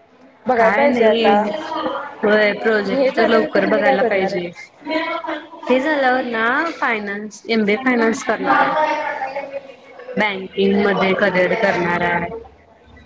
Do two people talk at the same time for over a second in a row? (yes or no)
yes